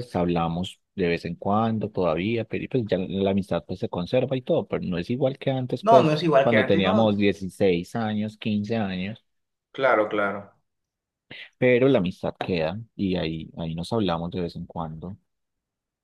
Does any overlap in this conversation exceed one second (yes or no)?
yes